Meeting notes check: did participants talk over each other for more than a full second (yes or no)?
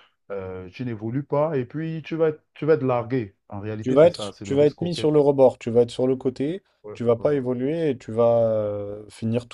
yes